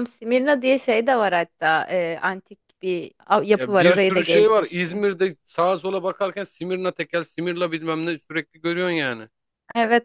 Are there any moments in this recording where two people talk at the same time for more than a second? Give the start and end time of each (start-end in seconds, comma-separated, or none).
3.5-5.1